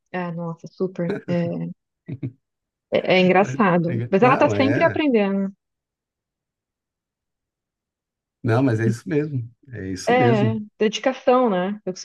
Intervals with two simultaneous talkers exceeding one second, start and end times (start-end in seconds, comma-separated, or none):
3.4-5.0